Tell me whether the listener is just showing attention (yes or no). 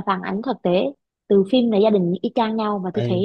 yes